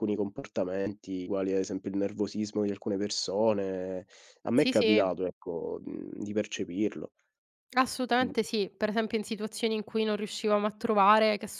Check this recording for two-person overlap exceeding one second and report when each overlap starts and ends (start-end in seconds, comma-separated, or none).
none